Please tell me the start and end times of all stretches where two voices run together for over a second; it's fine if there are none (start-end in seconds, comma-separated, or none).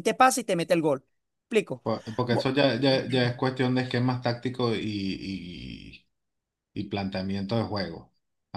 none